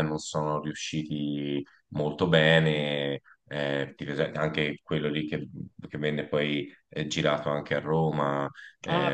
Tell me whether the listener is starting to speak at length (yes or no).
yes